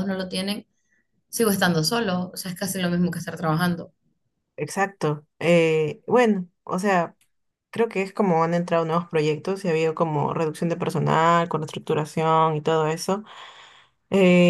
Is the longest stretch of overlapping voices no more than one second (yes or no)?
yes